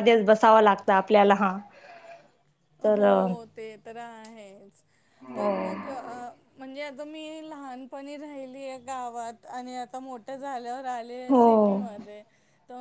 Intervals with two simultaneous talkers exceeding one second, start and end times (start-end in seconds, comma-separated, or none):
none